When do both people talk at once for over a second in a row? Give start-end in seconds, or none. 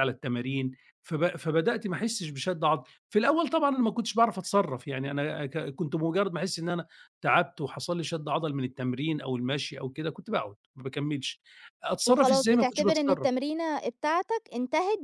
12.1-13.3